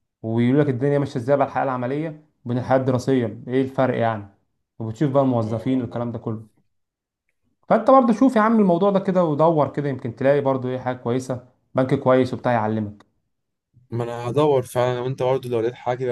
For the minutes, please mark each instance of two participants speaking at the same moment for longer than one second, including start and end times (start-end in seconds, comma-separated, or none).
none